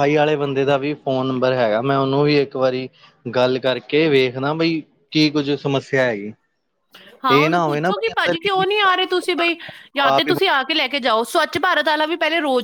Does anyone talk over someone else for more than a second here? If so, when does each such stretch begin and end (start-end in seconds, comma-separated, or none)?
7.4-8.6